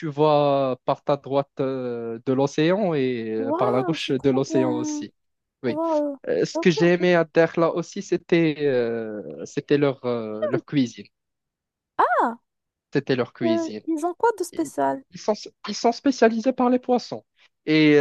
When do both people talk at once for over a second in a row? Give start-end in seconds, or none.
3.4-5.0